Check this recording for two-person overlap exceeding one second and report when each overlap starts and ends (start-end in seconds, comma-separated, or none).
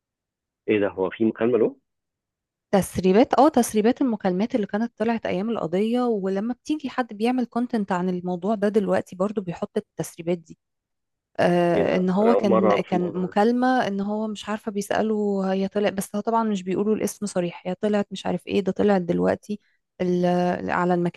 11.7-13.3